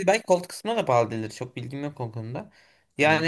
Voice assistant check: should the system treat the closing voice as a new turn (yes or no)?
yes